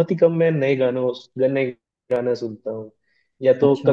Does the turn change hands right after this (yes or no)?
no